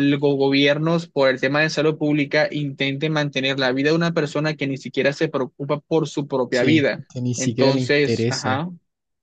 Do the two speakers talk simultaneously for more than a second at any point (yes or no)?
yes